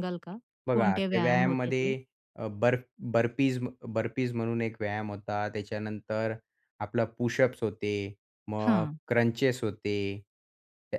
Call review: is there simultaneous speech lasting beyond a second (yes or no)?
yes